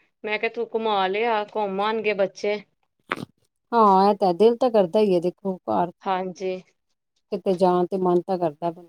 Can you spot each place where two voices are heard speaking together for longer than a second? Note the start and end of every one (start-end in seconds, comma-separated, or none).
none